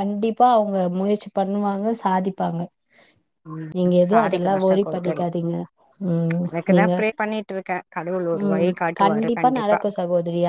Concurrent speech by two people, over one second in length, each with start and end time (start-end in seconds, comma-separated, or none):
3.8-5.2